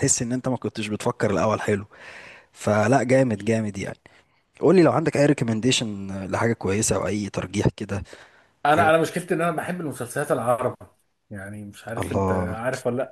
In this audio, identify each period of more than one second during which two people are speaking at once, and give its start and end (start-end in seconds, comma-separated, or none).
none